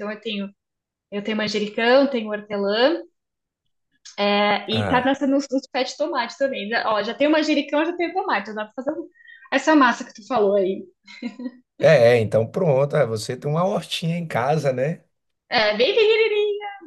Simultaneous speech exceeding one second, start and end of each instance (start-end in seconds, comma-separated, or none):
none